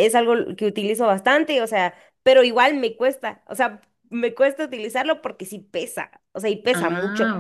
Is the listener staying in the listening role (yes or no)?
yes